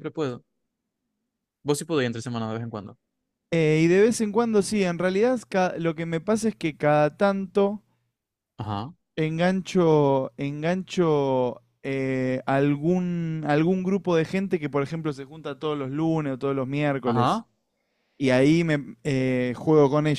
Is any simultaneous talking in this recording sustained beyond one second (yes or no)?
no